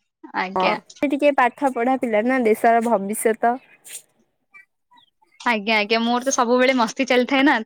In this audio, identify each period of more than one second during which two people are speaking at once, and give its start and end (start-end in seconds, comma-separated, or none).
none